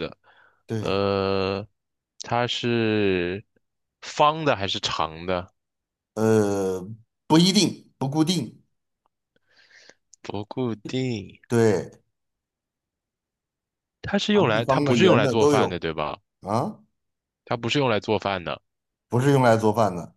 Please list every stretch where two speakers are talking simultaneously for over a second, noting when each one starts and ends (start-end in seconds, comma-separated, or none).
14.3-15.8